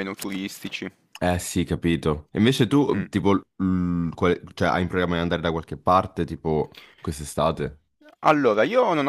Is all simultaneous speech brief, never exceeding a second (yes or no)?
yes